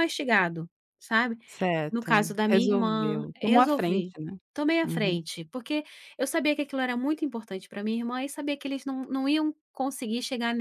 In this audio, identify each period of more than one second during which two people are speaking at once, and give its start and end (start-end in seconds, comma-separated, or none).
1.9-4.1